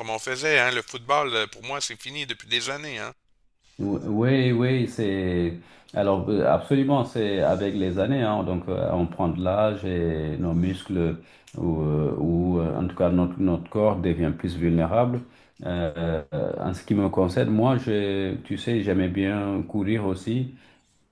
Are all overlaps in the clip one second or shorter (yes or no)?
yes